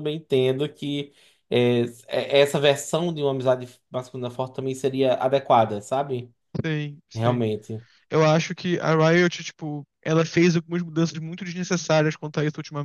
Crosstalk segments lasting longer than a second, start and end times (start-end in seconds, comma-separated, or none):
none